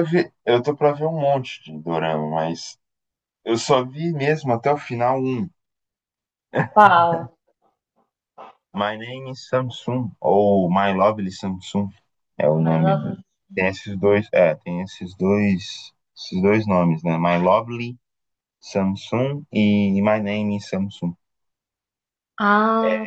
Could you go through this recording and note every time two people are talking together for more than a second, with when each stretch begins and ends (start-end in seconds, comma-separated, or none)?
none